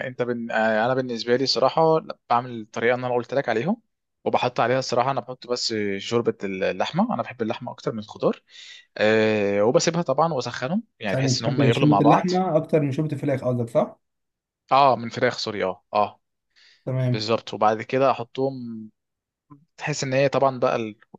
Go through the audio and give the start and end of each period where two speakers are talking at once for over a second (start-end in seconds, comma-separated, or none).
11.1-12.3